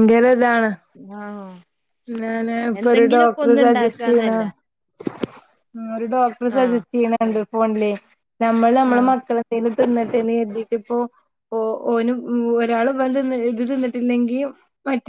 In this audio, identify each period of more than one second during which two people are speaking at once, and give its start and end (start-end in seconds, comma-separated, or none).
2.8-4.3